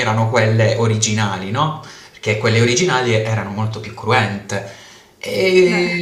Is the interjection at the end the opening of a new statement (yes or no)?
no